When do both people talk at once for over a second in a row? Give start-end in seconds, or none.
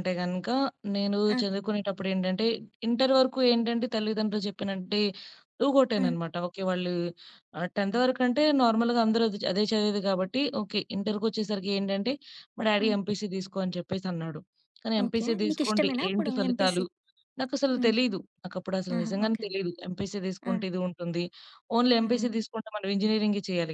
15.0-16.8